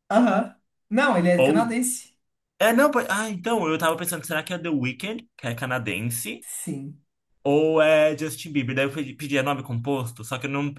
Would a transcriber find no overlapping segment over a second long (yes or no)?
yes